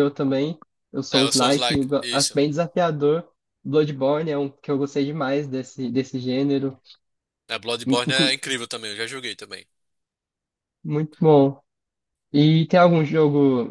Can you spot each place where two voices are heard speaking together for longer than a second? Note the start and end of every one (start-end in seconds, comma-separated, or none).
1.1-2.4